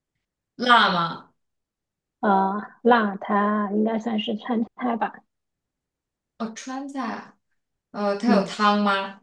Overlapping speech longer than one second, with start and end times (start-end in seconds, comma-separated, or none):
none